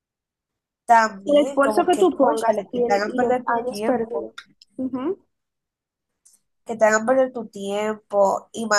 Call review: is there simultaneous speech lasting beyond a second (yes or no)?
yes